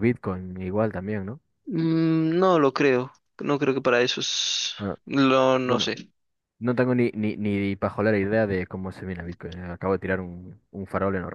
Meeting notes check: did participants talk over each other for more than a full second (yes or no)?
no